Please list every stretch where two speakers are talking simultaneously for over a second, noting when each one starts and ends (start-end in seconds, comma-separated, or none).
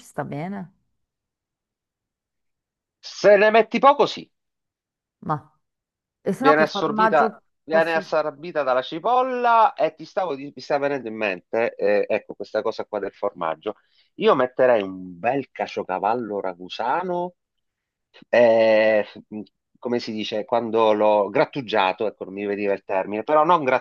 6.4-8.0